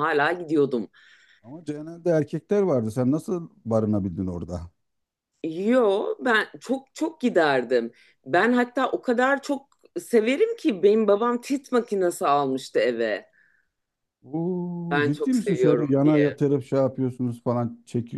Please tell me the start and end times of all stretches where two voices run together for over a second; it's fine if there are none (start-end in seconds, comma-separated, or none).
14.9-16.3